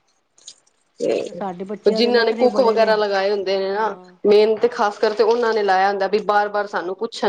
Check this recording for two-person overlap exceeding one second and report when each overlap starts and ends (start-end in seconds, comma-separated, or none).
1.1-2.9